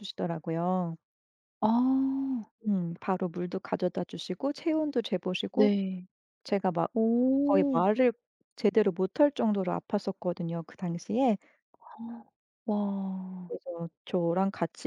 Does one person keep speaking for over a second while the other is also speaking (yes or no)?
no